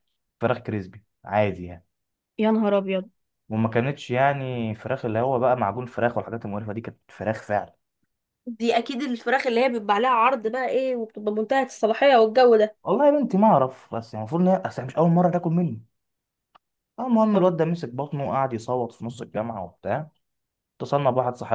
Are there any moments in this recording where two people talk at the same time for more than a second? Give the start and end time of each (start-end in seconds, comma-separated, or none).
none